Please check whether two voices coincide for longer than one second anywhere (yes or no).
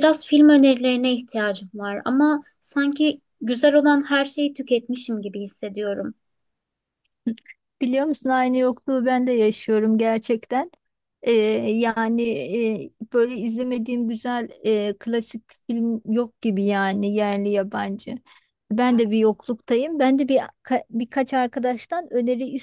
no